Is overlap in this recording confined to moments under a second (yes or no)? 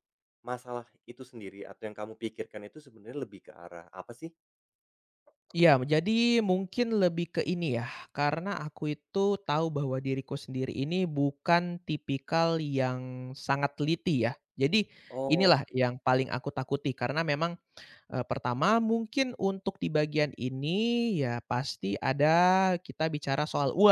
yes